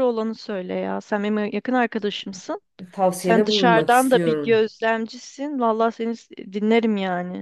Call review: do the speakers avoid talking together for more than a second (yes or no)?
no